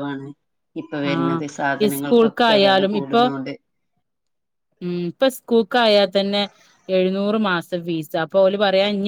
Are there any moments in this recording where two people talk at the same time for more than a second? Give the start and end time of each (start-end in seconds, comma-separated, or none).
1.1-3.2